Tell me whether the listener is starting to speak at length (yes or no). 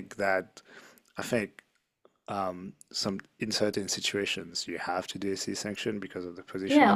yes